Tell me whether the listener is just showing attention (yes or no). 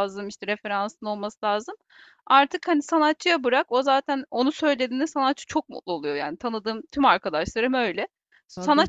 yes